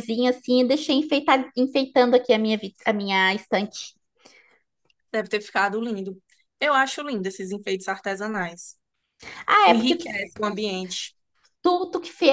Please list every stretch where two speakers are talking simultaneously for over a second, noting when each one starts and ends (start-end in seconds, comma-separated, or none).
none